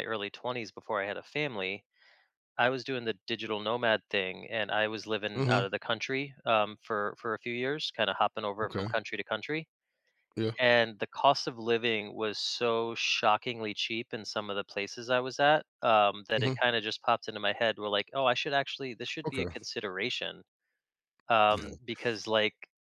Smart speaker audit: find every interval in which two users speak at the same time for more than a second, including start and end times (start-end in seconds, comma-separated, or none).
none